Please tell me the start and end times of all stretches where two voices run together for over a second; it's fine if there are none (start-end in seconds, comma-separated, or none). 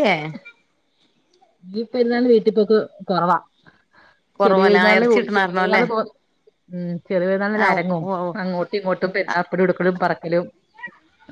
4.4-5.8